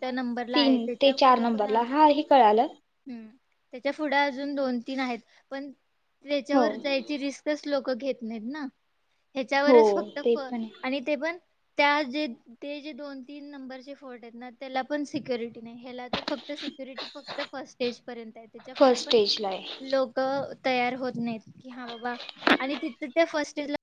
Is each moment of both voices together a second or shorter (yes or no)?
no